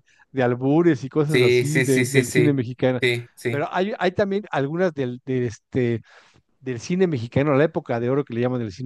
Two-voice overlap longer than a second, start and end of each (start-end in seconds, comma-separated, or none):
1.3-2.6